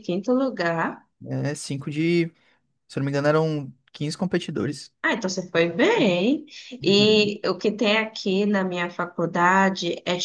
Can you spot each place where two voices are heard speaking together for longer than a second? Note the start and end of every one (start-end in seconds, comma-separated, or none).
none